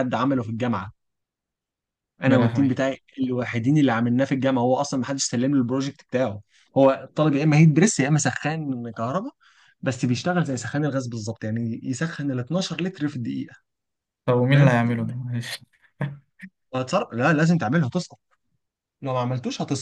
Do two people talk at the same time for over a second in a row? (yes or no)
no